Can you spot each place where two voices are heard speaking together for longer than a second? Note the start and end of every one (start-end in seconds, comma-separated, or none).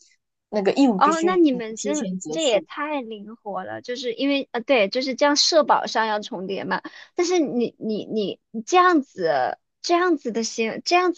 1.0-2.7